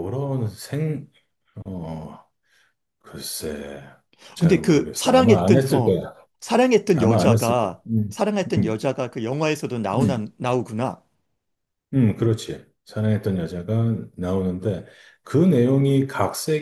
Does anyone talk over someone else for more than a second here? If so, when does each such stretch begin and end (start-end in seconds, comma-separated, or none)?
4.4-6.0, 6.9-8.8